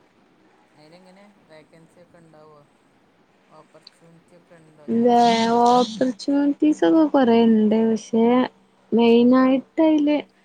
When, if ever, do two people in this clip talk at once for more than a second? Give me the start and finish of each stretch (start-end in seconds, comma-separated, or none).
none